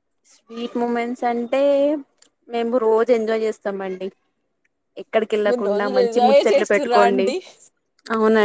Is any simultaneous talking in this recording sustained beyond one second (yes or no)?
yes